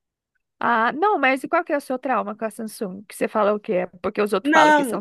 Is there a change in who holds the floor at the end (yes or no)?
yes